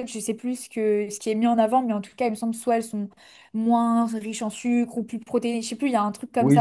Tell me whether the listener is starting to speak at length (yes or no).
yes